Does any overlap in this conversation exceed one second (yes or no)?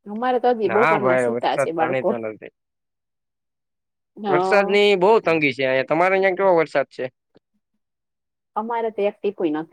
yes